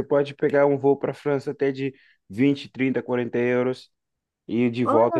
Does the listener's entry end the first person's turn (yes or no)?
no